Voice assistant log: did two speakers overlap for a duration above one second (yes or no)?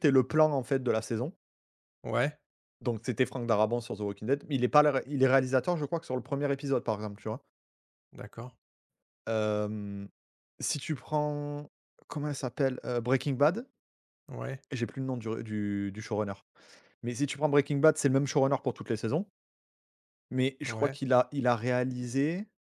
no